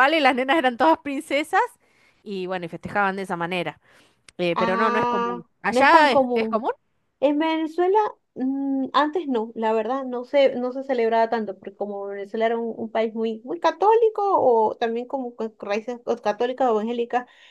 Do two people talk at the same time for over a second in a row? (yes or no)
yes